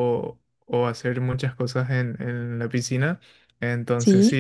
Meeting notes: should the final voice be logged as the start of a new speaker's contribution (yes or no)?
no